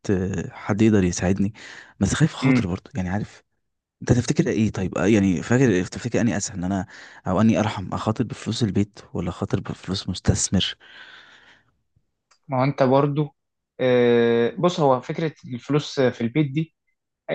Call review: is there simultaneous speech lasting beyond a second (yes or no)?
no